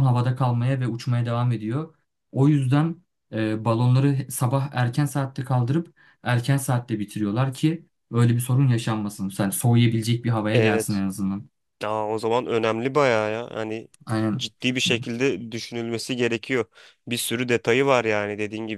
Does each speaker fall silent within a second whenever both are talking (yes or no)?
yes